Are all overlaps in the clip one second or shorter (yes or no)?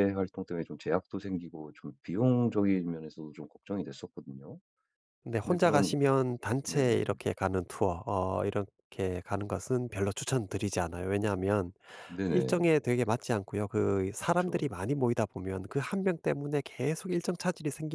yes